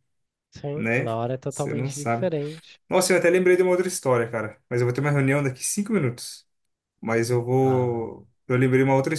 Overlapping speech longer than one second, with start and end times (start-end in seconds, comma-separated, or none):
0.7-2.3